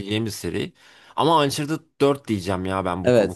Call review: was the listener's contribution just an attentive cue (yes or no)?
no